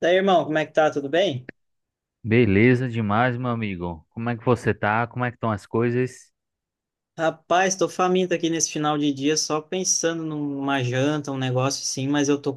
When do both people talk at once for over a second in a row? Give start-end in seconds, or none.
none